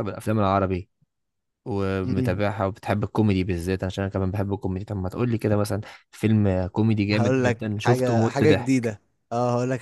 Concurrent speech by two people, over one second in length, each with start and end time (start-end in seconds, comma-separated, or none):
7.1-8.9